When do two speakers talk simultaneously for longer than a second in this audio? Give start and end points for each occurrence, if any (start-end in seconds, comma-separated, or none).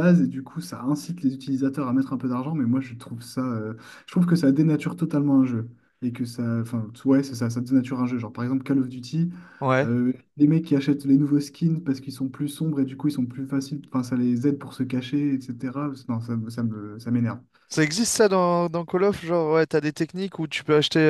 none